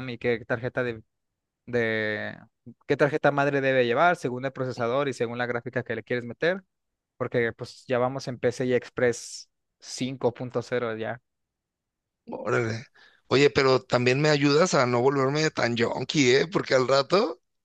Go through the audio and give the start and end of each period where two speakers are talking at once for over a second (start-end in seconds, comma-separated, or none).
none